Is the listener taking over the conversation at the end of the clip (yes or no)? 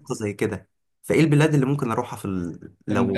yes